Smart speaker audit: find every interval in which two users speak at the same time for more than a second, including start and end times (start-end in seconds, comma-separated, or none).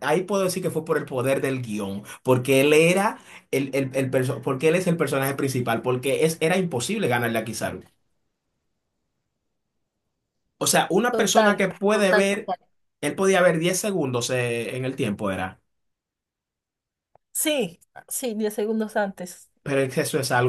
11.1-12.5